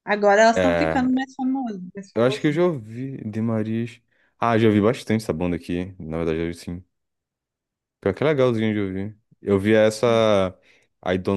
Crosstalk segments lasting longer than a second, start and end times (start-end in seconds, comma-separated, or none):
none